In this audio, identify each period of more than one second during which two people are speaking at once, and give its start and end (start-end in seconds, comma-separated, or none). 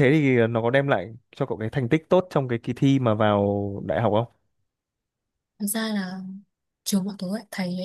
none